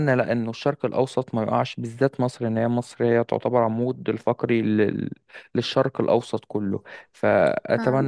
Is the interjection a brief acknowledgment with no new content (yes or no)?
no